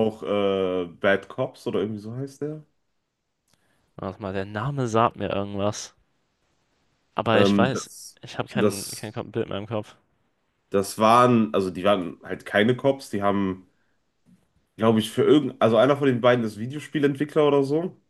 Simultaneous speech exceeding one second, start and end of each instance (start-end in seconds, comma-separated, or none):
7.3-9.2